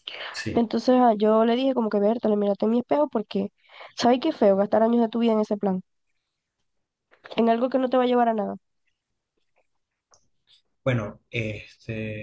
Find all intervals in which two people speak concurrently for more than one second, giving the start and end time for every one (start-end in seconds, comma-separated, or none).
none